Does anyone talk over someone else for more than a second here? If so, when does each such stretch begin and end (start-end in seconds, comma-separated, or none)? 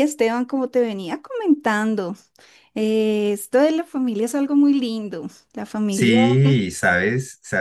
none